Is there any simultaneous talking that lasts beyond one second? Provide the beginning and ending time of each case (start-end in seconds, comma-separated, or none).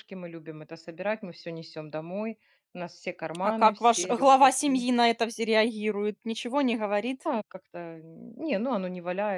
3.4-4.9